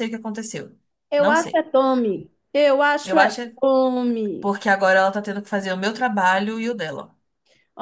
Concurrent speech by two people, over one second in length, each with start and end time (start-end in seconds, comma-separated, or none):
none